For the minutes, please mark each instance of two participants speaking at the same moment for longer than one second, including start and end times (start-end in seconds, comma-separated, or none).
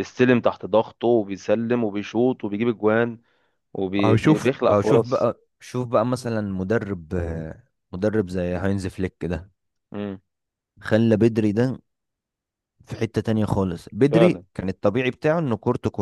4.0-5.3